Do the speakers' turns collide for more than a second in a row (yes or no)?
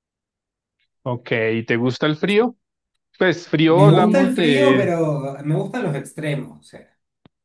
yes